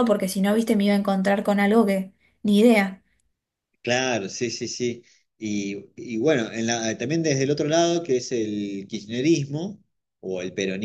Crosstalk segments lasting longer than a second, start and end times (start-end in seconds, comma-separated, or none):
none